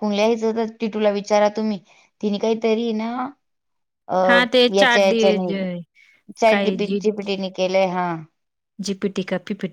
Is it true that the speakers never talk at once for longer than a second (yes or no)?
yes